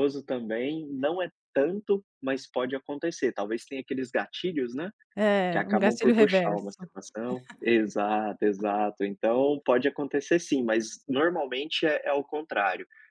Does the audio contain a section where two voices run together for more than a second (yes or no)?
yes